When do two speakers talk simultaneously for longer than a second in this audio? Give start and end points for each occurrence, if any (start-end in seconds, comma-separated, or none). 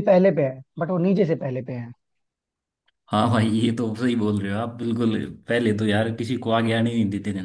none